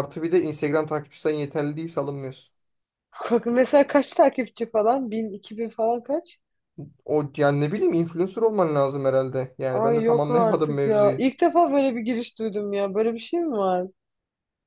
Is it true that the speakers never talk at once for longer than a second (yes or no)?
no